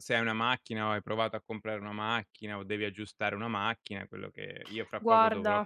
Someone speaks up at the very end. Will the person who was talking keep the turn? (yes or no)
yes